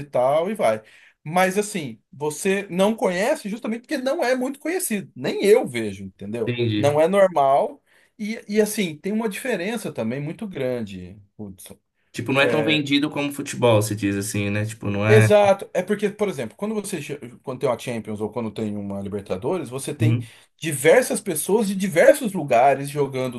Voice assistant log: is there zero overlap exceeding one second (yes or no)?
yes